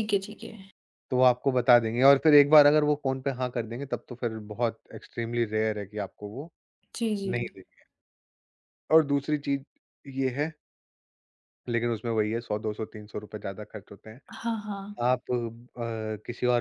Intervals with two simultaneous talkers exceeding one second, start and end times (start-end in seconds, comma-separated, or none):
none